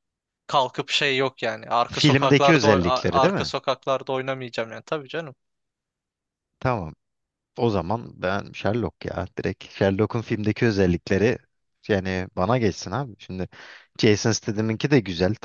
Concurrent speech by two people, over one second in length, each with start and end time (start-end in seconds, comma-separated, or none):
1.9-3.5